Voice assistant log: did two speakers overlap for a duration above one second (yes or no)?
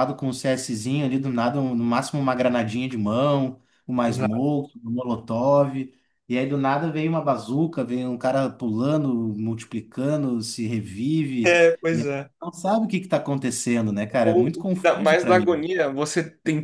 yes